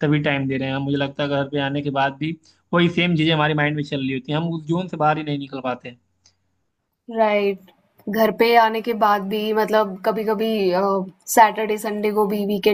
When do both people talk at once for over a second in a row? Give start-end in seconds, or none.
none